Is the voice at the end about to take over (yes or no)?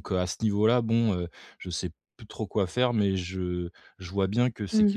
no